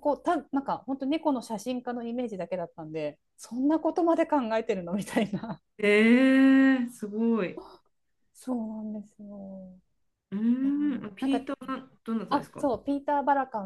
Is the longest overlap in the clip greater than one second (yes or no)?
no